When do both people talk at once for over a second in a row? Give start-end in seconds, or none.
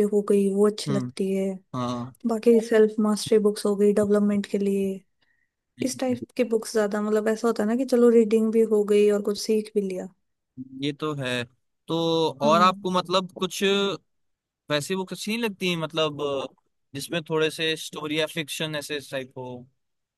none